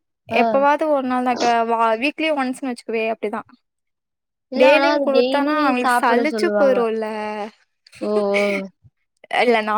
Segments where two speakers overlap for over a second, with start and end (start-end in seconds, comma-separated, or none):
4.6-6.8